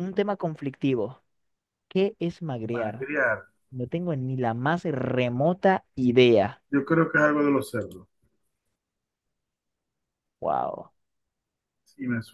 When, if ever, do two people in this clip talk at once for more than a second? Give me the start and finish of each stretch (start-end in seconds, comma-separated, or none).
none